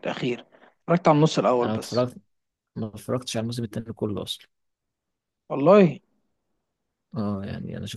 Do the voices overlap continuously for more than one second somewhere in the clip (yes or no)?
no